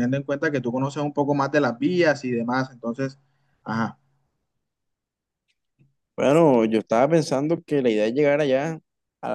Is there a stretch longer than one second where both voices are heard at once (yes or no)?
no